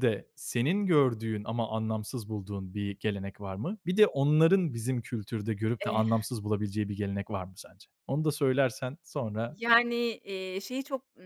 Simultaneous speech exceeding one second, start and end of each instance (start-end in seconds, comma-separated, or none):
none